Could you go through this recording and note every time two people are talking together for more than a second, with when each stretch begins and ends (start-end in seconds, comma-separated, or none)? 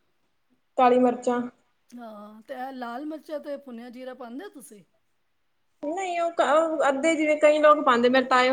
none